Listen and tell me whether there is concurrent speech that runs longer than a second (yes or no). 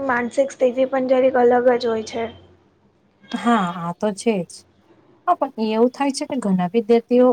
no